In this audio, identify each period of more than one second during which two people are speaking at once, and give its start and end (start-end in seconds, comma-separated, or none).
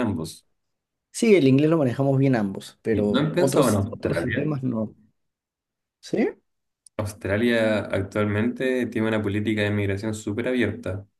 2.9-4.5